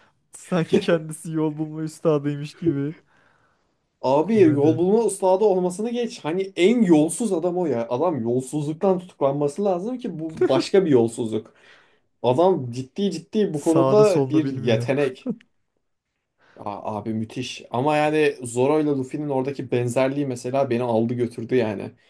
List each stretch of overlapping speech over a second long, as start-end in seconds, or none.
13.5-14.9